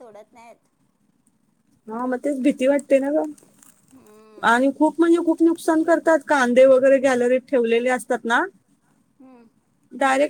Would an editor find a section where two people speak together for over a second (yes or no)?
no